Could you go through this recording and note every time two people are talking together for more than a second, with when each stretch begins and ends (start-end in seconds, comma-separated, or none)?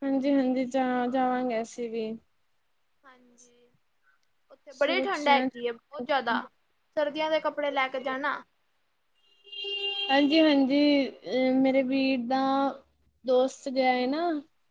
4.8-6.4